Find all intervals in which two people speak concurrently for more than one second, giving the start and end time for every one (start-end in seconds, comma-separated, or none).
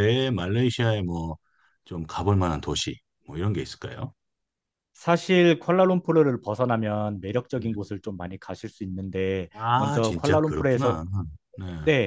9.5-11.0